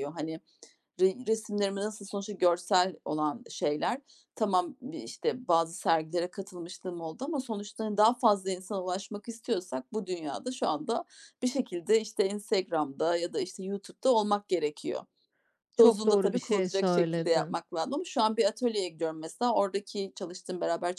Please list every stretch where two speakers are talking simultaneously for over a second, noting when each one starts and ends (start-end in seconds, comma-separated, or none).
15.8-17.6